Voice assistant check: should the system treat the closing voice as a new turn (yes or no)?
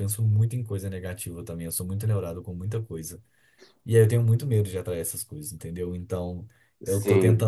no